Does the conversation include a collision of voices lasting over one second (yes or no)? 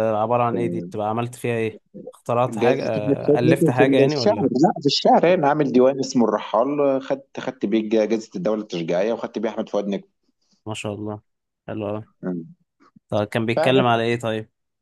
yes